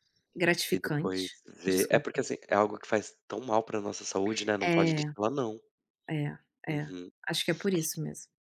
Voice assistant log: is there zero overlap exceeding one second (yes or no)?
no